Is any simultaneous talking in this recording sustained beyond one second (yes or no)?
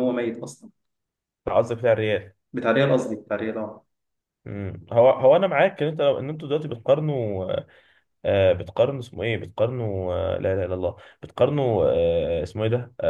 no